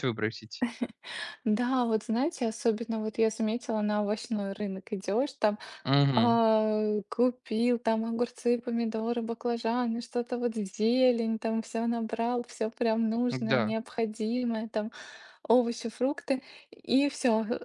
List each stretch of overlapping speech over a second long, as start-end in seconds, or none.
none